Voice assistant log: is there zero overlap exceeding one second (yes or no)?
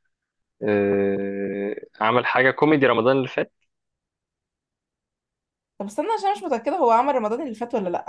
yes